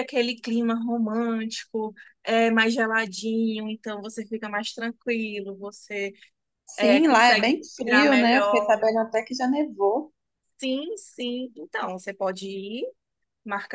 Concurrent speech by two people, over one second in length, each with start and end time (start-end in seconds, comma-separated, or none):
6.8-8.8